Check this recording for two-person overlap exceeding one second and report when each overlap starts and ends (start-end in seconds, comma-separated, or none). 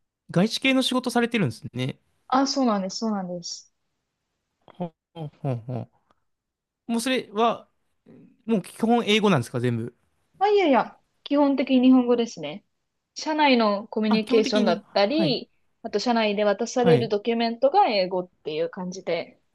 14.1-15.4